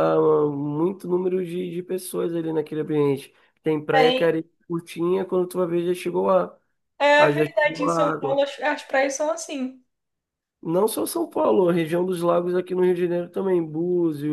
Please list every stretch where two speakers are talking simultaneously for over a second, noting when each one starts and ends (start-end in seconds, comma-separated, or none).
7.2-8.4